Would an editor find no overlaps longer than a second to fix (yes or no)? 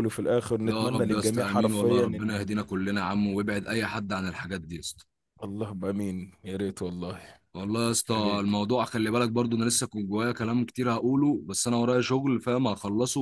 no